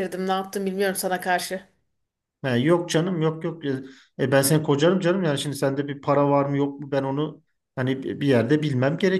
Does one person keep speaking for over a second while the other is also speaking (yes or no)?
no